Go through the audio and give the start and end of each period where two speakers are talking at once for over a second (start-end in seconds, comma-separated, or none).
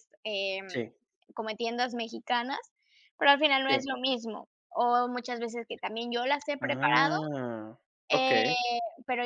none